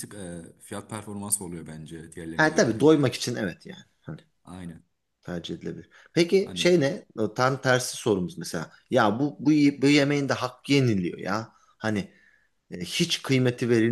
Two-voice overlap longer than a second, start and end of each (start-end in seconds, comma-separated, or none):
none